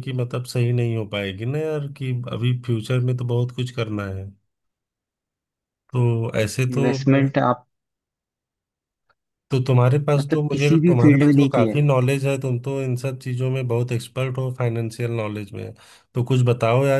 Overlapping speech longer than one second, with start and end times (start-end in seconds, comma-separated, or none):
10.2-11.8